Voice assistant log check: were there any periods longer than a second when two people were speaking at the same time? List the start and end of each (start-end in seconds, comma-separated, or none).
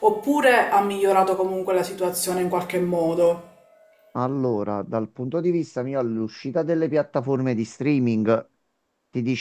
none